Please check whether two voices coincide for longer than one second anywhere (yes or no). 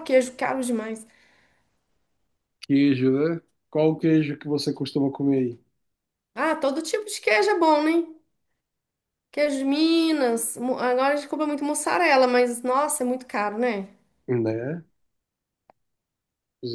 no